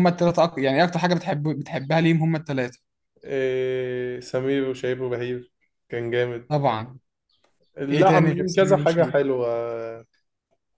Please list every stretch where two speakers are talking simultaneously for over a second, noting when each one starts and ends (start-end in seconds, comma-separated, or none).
7.9-9.2